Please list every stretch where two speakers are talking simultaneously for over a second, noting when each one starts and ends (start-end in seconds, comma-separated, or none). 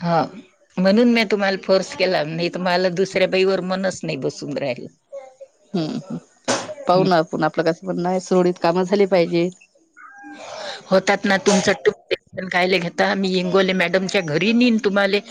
none